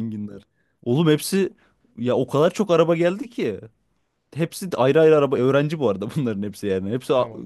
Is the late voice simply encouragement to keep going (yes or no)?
yes